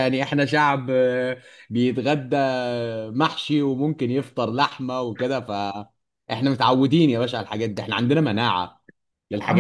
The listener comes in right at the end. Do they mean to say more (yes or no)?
yes